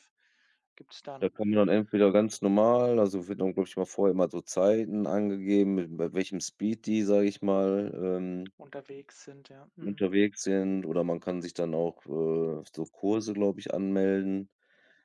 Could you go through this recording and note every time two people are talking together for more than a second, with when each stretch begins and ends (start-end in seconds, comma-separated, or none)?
none